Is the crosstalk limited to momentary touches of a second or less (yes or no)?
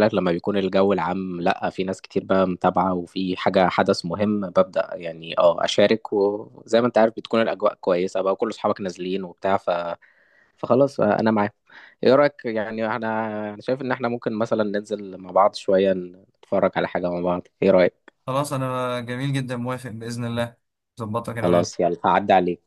yes